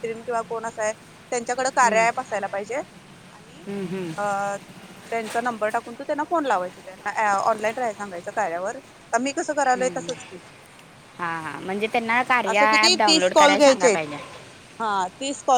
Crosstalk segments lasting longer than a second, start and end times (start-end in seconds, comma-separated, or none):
12.5-14.0